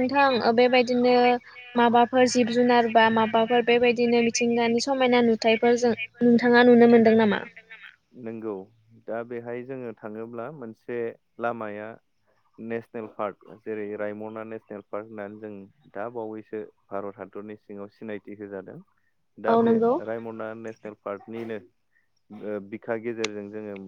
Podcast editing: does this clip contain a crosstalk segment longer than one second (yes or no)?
yes